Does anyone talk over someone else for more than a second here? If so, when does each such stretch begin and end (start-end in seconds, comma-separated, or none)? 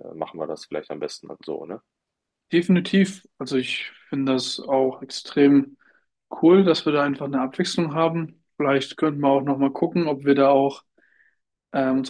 none